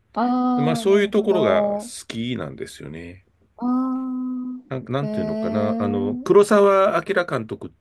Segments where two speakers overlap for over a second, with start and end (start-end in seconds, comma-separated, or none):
0.6-1.9, 5.0-6.3